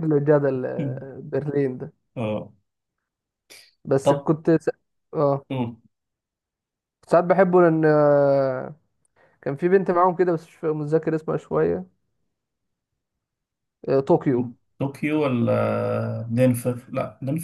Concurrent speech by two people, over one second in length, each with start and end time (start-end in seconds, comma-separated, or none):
none